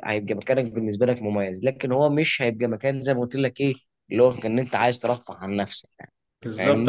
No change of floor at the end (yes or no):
no